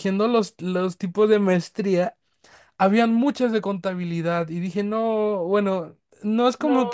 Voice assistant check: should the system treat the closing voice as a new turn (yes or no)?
no